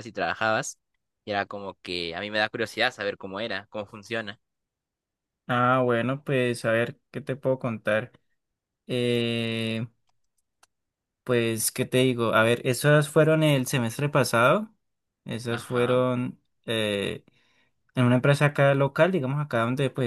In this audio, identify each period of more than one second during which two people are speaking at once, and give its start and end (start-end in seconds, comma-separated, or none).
none